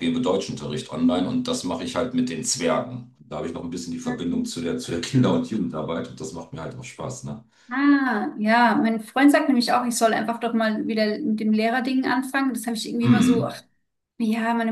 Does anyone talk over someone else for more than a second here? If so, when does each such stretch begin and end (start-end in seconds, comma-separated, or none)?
none